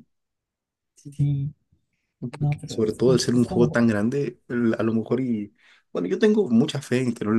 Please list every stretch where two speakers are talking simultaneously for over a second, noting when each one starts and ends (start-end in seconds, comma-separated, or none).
2.4-3.8